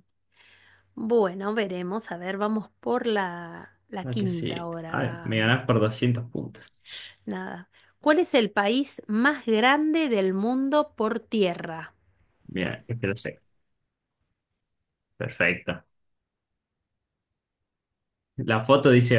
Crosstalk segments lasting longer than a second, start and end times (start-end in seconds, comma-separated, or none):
4.0-5.4